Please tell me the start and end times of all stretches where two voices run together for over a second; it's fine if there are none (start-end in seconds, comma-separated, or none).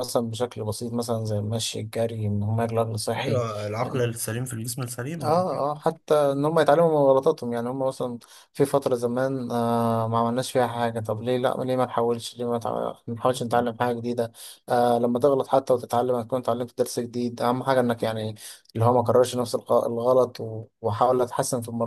none